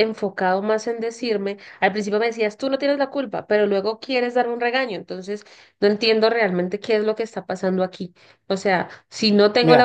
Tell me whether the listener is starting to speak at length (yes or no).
yes